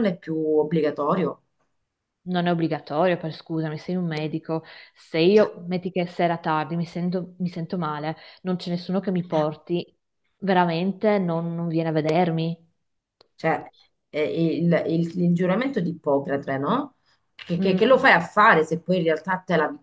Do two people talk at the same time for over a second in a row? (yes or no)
no